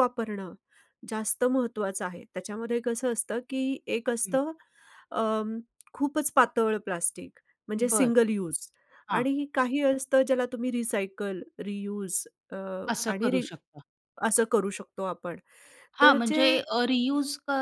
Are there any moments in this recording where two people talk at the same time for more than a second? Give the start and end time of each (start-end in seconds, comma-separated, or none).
none